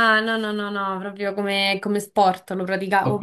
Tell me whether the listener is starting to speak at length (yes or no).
yes